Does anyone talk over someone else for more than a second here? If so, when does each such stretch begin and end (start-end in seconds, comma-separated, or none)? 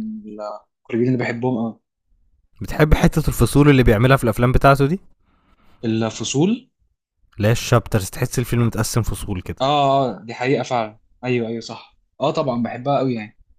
none